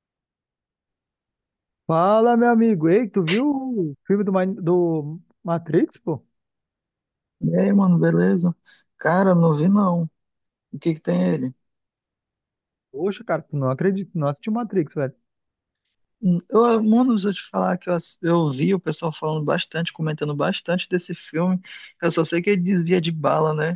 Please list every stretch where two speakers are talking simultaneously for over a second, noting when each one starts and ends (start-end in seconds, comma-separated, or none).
none